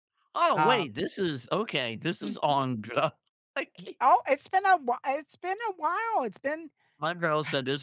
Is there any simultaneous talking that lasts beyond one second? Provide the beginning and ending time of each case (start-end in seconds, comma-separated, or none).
none